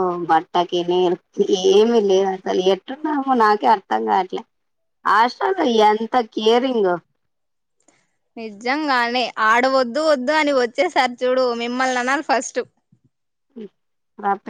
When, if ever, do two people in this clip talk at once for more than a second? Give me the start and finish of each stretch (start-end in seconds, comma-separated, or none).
none